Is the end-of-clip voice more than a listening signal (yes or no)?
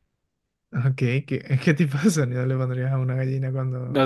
yes